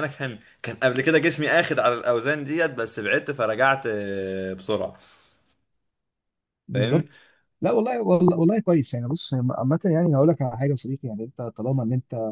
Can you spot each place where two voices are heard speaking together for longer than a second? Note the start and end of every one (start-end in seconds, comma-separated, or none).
none